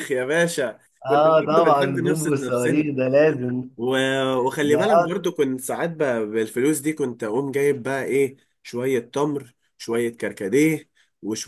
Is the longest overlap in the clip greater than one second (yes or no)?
yes